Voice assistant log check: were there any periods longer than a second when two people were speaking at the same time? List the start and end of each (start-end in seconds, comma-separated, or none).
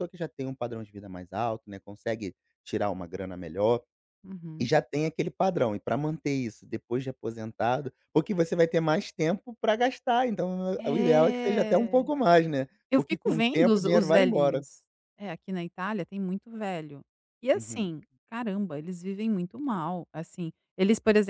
10.8-12.1, 12.9-14.7